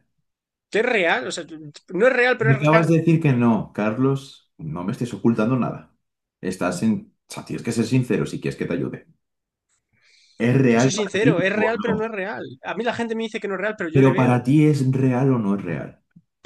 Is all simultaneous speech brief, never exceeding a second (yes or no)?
no